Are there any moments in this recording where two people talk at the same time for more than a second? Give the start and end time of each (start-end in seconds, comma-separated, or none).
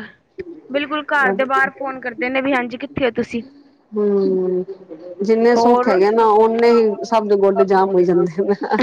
none